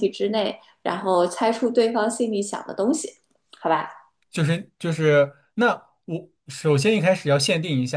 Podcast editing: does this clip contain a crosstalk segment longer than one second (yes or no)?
no